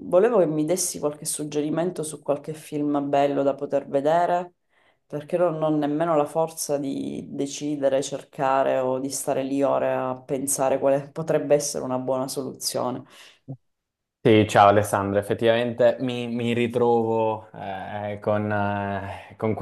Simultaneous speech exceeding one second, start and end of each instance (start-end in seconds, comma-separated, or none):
none